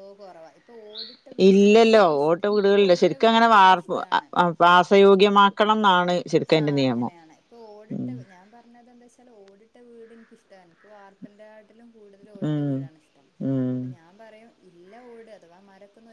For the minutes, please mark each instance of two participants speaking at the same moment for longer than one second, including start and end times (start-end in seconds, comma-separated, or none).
1.5-4.3